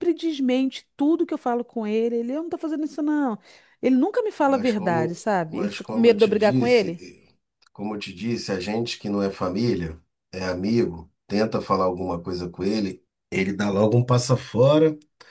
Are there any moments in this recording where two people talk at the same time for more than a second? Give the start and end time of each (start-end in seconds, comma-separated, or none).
4.4-7.0